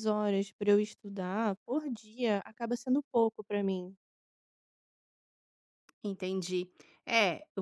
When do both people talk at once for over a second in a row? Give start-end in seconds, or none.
none